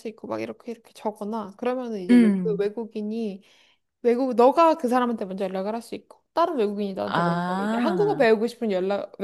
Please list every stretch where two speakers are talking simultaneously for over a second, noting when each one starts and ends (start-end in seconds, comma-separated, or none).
7.0-8.3